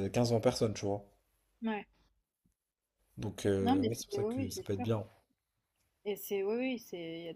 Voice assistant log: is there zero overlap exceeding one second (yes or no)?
no